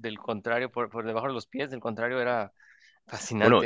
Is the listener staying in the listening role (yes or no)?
no